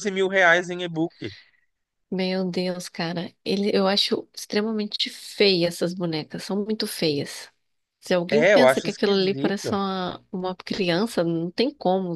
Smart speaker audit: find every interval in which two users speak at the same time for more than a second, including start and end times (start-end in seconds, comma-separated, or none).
8.3-9.7